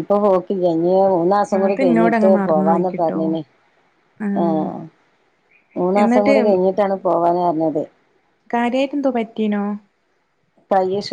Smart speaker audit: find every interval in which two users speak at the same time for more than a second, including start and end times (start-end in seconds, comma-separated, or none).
1.6-3.2